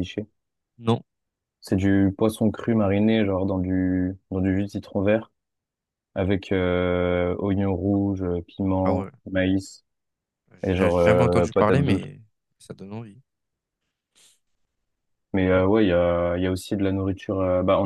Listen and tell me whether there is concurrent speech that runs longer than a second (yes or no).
yes